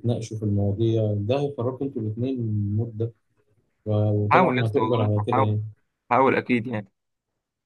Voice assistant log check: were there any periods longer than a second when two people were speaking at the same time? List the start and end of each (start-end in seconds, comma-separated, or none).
4.3-5.6